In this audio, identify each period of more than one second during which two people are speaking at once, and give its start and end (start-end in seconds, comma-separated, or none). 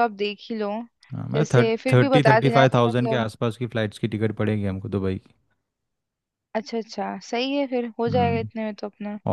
1.3-3.3